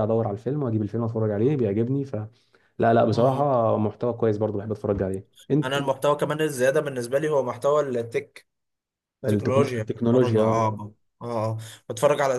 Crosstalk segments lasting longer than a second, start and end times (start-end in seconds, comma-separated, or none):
9.3-10.6